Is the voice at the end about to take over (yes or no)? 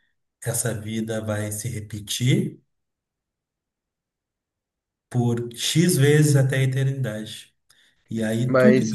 yes